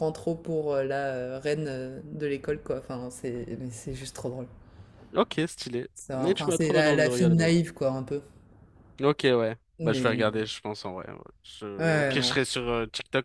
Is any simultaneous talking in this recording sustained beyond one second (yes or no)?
yes